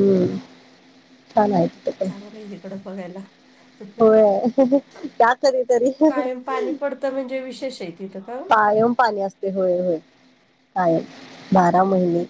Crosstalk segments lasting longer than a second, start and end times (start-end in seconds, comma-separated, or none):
none